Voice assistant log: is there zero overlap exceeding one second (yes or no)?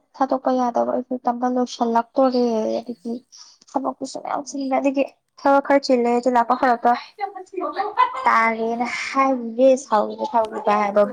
no